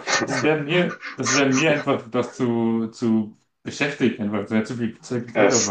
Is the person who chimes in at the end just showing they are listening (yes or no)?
no